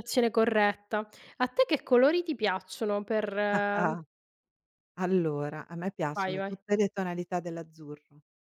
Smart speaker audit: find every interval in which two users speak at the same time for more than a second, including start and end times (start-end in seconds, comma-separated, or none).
none